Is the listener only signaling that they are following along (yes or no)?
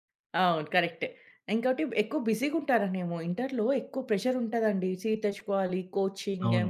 yes